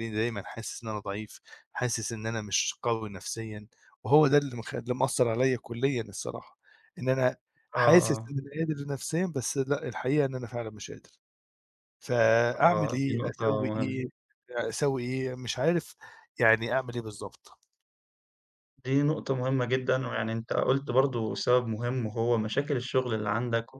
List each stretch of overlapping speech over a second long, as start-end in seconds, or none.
12.6-14.0